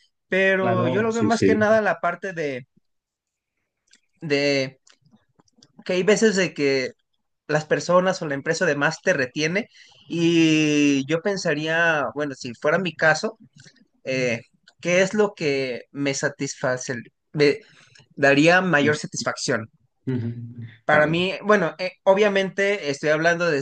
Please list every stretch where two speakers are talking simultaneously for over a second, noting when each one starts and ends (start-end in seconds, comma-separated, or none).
0.6-1.8